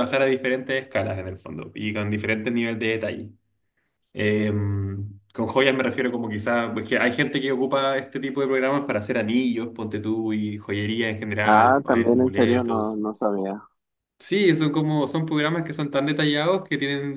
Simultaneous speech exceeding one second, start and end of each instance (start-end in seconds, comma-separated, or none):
11.4-13.0